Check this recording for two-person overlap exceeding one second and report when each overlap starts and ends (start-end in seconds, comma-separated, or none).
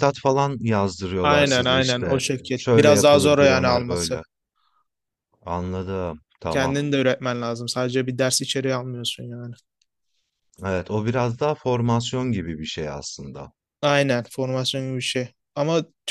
1.2-4.2